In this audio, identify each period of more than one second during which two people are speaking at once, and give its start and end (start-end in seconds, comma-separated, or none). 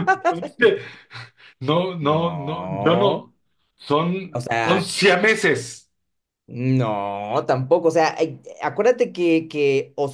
2.0-3.3